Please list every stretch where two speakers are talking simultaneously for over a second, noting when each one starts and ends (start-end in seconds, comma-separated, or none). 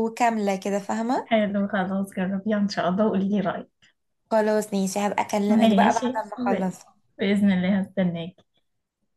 5.5-6.7